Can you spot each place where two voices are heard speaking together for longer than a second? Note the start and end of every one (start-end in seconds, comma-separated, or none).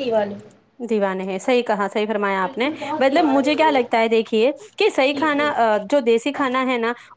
2.4-3.9